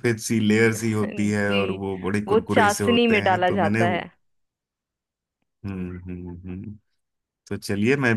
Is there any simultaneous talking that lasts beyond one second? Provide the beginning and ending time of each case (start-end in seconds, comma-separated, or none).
2.3-4.1